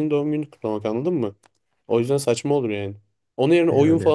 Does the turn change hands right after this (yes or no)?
no